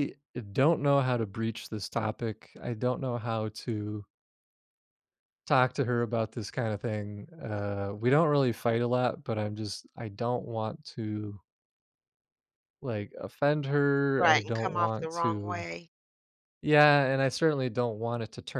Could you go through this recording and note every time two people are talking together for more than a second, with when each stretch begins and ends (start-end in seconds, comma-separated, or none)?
14.2-15.7